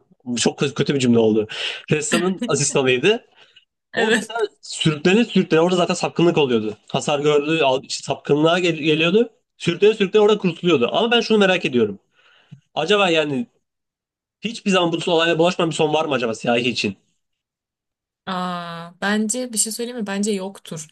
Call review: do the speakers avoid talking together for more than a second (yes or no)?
yes